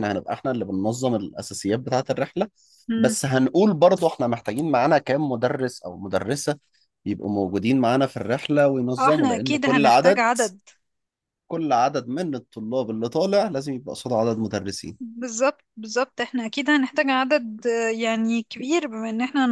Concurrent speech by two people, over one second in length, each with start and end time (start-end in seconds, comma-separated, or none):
9.0-10.2